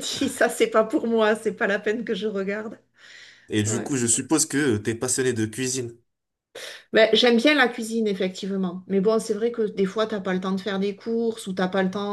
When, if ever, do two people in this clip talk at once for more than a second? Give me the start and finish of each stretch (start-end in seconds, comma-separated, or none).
none